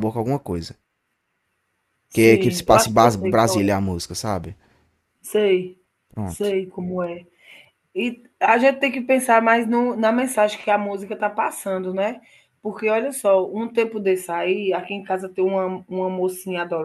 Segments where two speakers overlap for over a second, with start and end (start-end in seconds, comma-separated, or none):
2.1-3.8